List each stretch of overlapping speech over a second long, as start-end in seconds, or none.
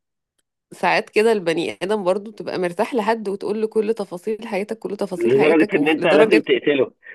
5.2-6.4